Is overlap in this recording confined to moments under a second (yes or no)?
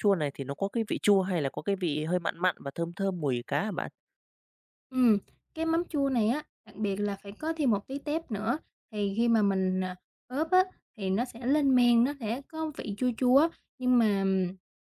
yes